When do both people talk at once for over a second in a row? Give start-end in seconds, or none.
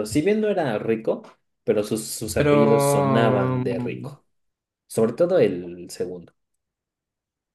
2.3-4.2